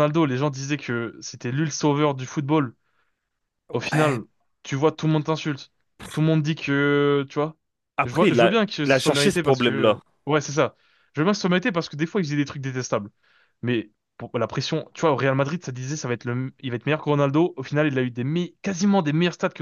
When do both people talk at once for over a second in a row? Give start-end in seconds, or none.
8.0-10.0